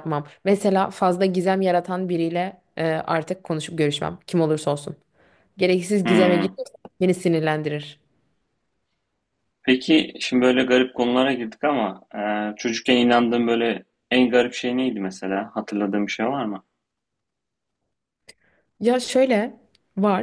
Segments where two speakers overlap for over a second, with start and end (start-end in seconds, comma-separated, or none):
none